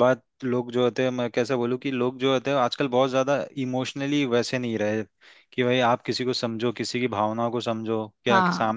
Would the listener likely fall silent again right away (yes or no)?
yes